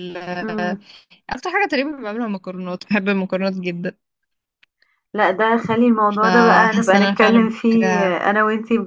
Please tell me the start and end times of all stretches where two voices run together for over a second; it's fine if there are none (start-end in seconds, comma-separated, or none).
6.2-8.2